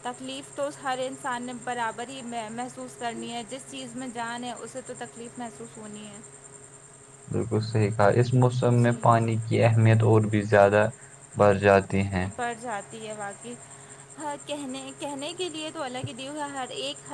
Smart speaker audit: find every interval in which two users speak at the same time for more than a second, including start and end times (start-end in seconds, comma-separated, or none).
none